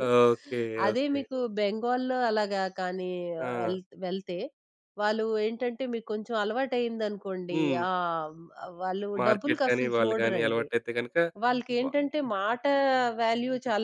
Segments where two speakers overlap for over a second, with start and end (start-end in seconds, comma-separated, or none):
9.2-10.7